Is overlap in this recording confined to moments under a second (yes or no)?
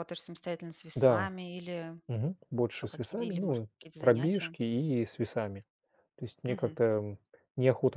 no